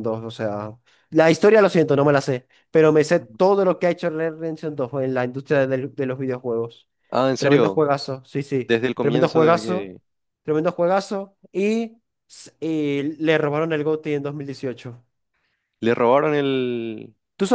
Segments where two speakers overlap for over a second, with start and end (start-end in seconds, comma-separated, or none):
8.7-9.9